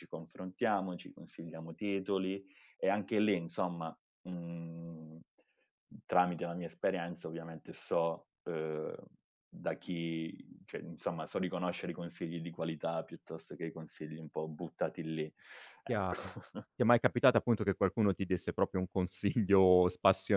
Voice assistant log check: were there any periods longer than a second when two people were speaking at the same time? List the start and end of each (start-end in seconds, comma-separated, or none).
none